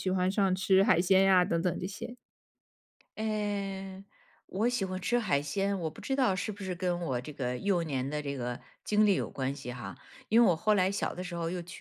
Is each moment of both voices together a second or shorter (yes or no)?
yes